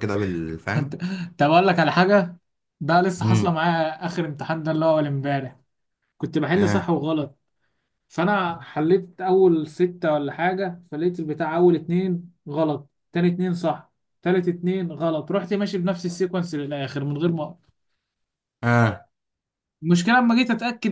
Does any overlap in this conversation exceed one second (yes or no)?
no